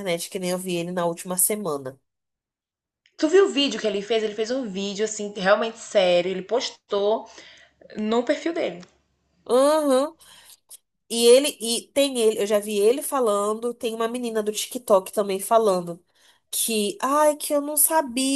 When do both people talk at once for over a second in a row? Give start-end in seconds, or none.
none